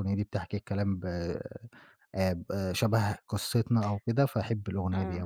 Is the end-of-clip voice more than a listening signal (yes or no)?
yes